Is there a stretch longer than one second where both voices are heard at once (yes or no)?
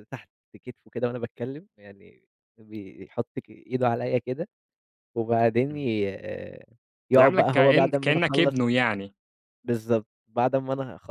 yes